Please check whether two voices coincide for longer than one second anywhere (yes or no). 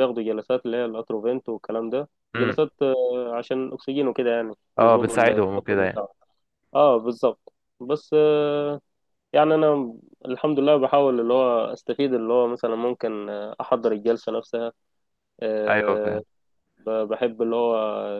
yes